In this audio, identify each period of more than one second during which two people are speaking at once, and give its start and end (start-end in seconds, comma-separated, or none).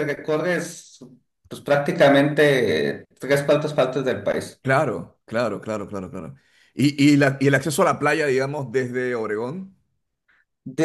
none